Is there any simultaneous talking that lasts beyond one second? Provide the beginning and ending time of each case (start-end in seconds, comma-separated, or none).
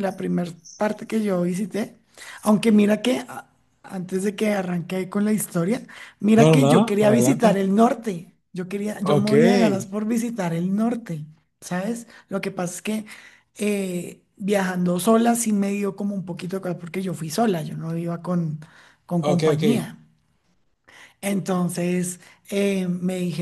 6.3-7.6